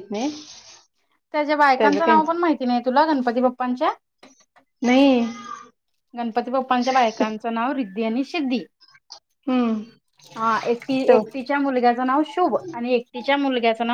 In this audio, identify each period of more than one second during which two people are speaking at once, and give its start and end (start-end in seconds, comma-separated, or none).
none